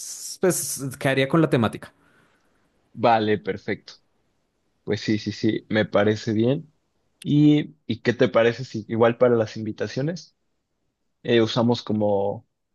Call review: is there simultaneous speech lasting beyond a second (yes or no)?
no